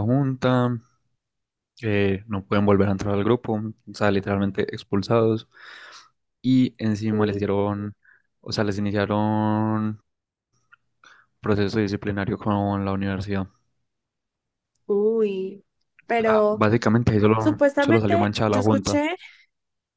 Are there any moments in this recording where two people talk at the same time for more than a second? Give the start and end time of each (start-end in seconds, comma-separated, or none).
17.4-19.0